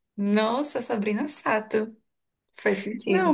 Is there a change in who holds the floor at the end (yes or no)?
yes